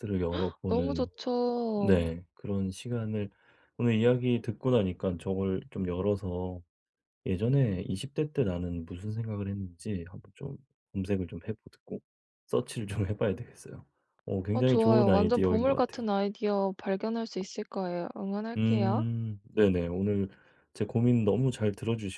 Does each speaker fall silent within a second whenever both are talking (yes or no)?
no